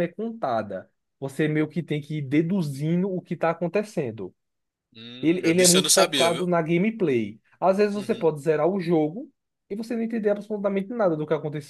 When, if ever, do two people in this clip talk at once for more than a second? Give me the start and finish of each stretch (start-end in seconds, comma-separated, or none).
5.2-6.5